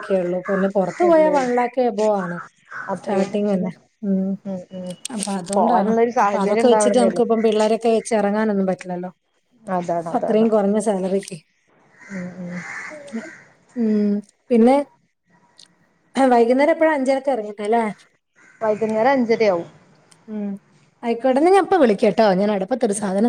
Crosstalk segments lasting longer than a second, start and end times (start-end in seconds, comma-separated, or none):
5.6-7.2